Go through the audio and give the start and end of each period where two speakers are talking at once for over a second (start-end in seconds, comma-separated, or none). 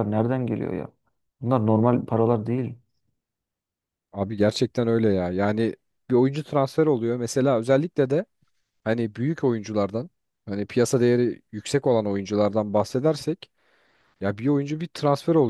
none